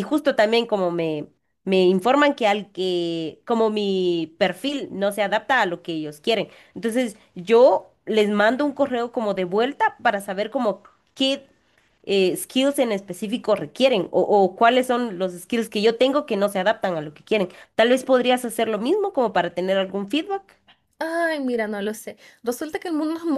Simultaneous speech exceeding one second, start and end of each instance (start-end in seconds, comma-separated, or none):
none